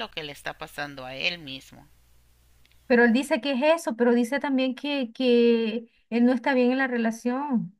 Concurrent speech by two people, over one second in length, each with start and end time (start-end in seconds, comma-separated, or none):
none